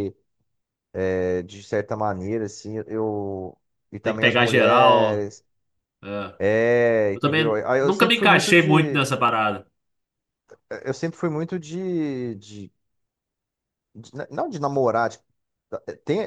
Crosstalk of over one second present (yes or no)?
yes